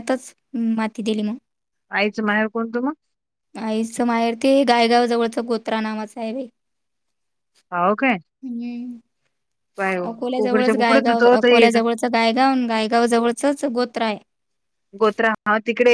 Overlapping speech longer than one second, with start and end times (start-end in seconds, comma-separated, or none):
10.1-11.8